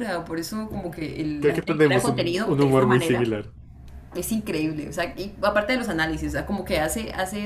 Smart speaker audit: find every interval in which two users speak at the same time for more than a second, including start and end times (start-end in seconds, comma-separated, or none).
1.4-3.4